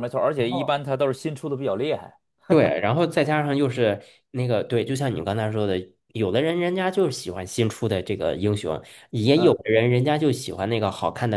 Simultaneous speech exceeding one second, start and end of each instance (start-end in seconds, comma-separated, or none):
none